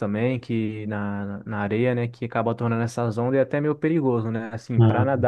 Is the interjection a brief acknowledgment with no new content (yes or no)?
yes